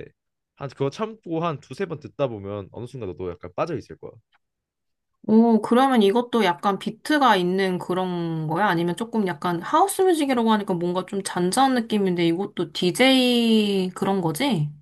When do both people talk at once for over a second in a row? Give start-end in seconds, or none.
none